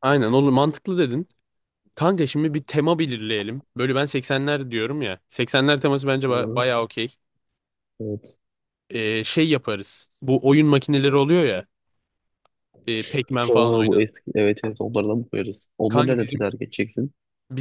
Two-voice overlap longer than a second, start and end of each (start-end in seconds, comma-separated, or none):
none